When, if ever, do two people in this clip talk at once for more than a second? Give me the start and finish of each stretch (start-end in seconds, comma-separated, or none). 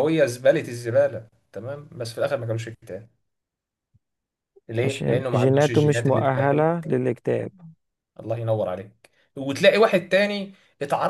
4.8-6.7